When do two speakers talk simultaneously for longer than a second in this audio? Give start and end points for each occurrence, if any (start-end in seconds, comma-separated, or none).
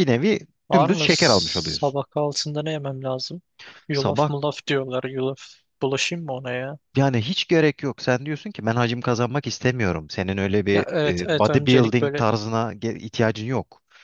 0.7-2.0, 10.7-12.2